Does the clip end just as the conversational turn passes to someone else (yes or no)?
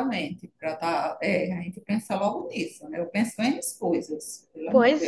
yes